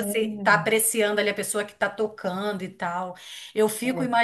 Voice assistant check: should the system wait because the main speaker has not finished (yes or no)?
yes